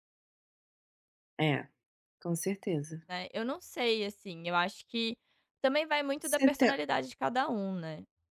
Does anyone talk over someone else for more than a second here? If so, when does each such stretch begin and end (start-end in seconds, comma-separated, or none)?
none